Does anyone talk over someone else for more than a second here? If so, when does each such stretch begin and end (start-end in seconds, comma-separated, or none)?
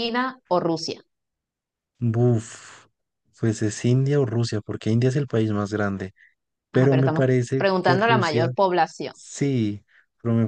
6.7-8.5